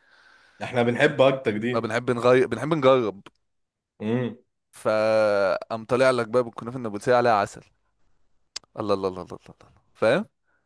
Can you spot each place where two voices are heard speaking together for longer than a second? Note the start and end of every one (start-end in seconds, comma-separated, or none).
none